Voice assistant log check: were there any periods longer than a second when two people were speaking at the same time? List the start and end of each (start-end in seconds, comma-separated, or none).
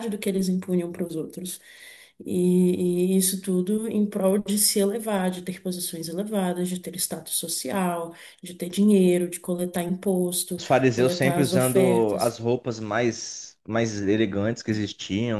10.6-12.4